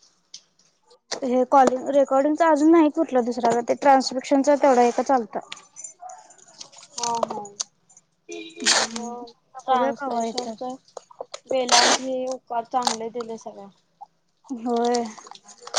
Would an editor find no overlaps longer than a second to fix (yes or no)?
no